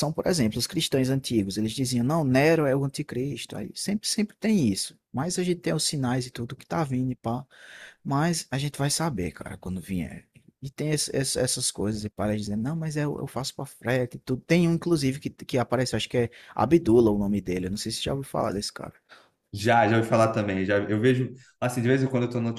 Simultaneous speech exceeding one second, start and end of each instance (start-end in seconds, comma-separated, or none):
none